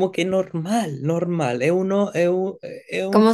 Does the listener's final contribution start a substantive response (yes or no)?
yes